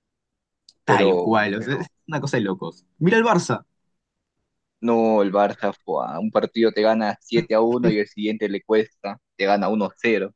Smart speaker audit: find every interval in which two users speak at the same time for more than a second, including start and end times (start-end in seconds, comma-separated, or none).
none